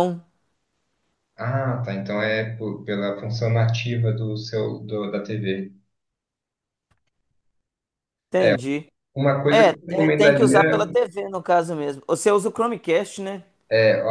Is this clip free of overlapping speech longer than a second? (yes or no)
no